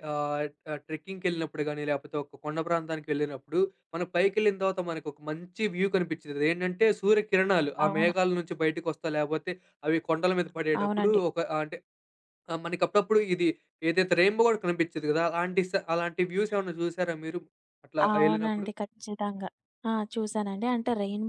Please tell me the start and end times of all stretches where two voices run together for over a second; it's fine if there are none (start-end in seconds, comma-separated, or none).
none